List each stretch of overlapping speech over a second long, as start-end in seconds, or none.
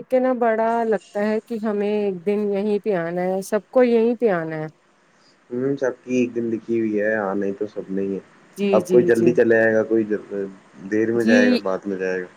none